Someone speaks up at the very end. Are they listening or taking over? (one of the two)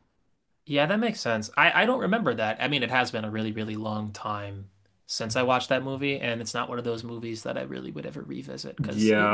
taking over